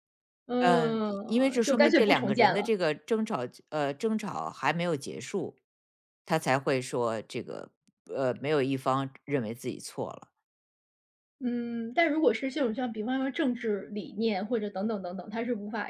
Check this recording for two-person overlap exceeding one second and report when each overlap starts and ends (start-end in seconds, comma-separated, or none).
0.6-2.7